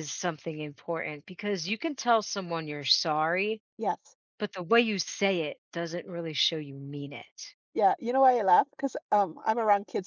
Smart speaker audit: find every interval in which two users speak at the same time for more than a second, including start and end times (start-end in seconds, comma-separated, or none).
none